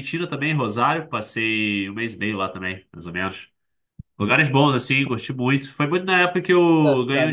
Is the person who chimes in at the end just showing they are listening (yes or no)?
no